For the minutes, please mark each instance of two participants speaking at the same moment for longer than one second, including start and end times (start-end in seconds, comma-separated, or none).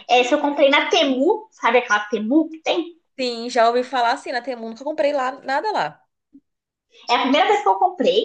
none